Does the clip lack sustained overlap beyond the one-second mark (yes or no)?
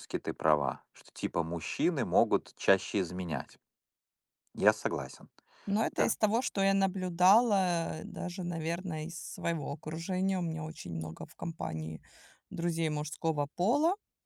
yes